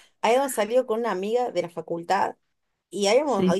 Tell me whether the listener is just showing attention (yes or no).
yes